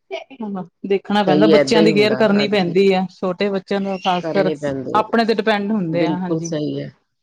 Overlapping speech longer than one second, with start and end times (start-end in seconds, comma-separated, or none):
1.2-2.8